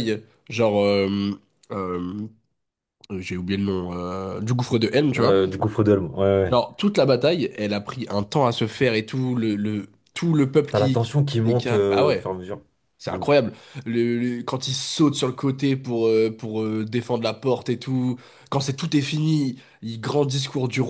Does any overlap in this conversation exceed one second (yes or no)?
yes